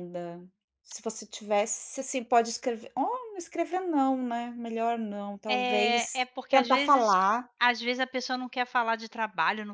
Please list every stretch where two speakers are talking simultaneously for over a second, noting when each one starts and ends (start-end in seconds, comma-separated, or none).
5.5-7.1